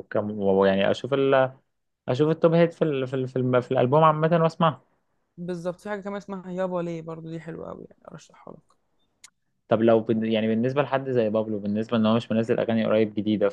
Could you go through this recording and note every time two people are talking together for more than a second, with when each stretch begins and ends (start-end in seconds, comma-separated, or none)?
none